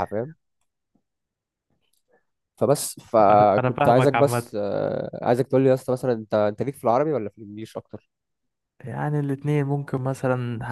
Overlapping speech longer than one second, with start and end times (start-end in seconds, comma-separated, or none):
3.3-4.5